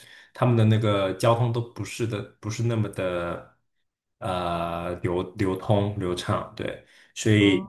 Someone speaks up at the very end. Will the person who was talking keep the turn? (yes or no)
yes